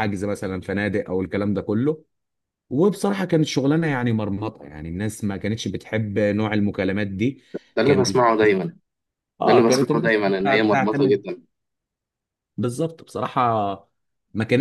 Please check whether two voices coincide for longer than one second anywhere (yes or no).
yes